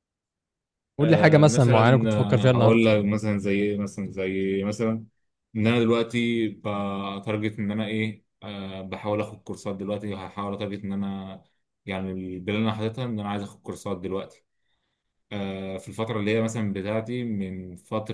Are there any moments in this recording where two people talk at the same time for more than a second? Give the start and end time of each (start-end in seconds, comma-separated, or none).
1.0-2.9